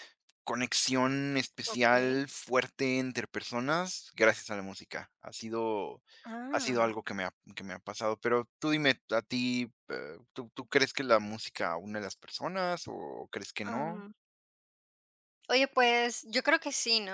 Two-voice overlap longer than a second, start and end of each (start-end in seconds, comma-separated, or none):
none